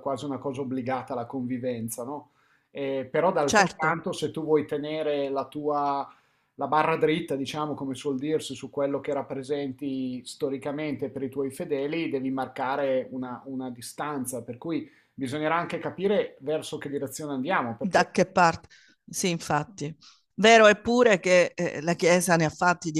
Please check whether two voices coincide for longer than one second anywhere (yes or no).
no